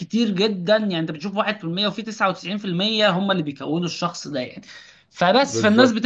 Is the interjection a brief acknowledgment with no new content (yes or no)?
yes